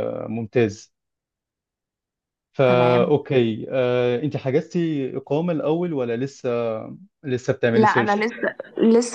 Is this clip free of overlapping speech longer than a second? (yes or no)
yes